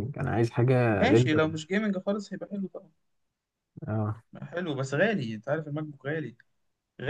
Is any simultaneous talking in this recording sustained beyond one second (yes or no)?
no